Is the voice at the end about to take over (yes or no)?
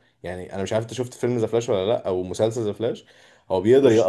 no